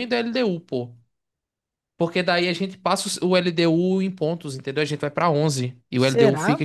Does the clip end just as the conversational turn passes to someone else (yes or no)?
no